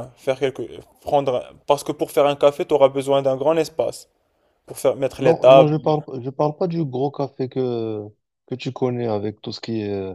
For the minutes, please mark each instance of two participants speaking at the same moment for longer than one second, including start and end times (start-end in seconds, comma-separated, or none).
none